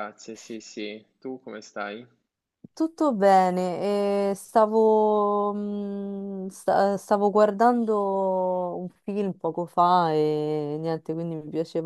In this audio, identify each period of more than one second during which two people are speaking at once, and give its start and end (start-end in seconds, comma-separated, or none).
none